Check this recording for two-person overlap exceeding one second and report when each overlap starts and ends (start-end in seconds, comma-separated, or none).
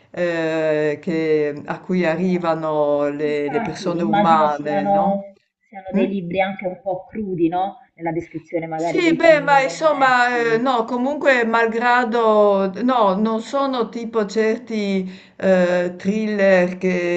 3.2-5.3, 8.8-10.6